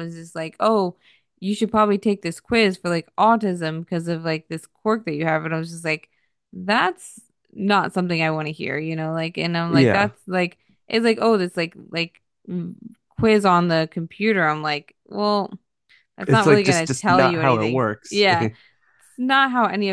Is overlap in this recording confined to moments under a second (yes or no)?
no